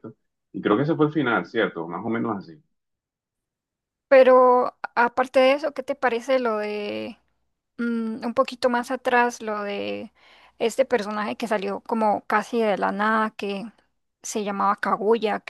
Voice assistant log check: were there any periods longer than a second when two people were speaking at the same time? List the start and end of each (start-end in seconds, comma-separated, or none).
none